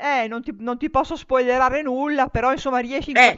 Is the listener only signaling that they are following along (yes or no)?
yes